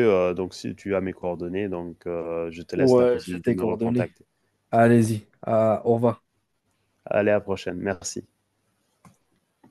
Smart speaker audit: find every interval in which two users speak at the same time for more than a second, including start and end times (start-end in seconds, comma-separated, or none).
2.7-4.1